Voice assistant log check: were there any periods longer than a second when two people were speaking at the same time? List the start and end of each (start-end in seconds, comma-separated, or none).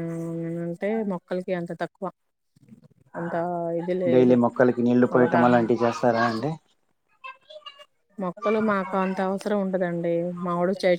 none